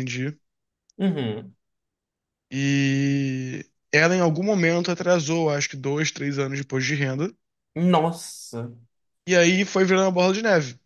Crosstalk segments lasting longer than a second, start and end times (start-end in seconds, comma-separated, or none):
none